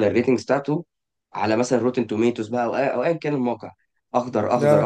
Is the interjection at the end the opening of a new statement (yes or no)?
no